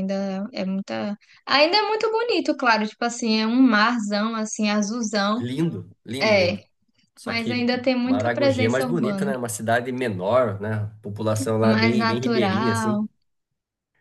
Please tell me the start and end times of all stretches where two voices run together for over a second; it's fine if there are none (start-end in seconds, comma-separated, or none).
7.2-9.3, 11.6-13.0